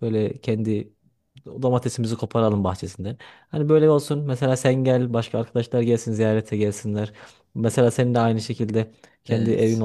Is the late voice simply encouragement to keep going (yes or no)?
yes